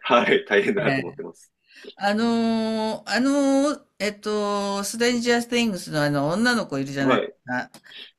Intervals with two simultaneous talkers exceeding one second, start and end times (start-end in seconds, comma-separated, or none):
none